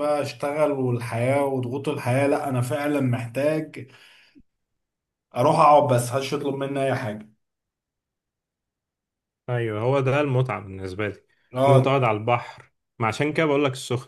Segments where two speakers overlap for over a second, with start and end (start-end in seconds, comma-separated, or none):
none